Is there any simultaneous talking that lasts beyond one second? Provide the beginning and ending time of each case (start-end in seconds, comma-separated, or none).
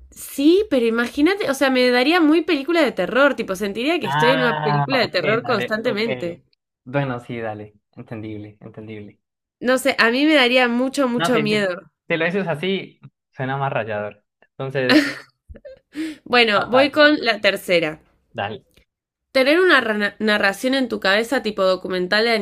4.0-6.0